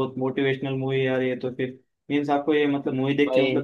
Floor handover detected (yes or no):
no